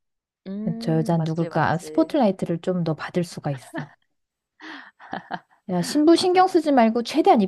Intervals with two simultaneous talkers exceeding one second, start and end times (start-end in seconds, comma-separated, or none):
0.8-2.1